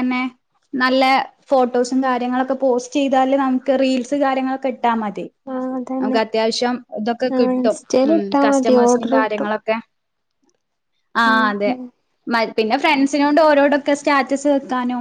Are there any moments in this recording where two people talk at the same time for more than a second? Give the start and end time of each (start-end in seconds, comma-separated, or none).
7.3-9.5